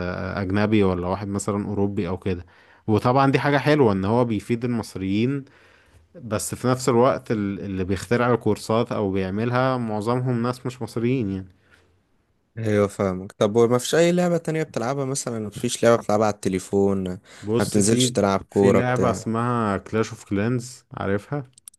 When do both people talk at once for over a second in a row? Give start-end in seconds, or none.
17.6-19.2